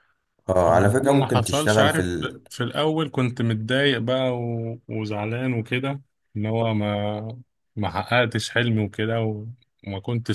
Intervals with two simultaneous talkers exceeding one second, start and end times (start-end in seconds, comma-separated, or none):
1.0-2.4